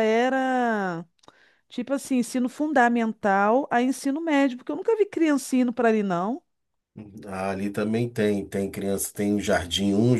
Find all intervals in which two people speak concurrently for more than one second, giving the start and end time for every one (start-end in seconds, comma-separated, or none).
none